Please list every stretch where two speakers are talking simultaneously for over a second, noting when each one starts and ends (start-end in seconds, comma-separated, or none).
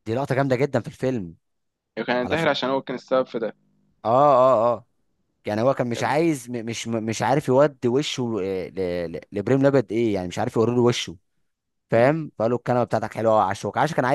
none